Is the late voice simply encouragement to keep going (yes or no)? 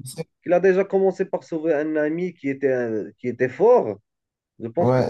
no